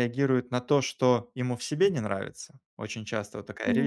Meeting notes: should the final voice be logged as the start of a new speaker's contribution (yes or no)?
no